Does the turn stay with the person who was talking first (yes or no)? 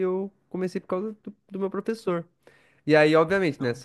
yes